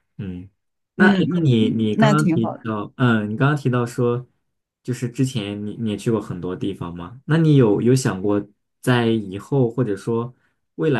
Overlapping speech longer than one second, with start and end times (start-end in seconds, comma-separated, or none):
0.9-2.7